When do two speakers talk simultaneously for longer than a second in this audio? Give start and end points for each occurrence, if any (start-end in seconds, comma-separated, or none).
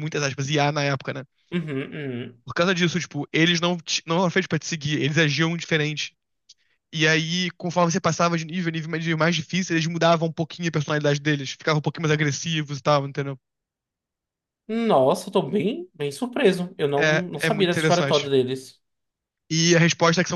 17.0-18.3